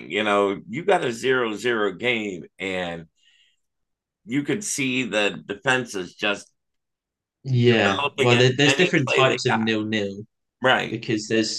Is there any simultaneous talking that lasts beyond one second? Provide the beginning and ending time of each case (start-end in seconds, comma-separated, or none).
8.0-9.7